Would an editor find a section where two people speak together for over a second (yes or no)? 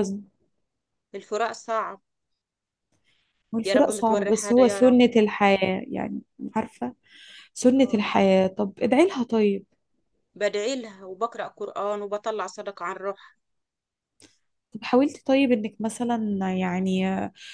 yes